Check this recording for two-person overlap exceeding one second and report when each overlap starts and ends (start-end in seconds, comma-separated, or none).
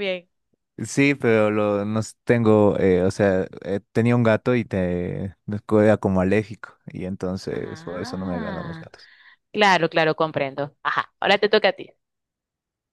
7.5-8.9